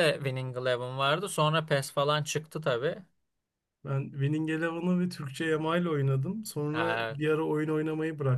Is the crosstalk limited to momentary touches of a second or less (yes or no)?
yes